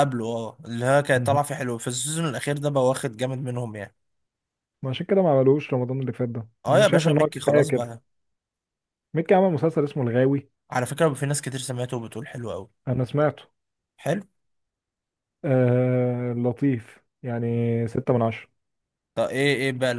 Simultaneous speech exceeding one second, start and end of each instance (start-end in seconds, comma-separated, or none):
6.7-7.9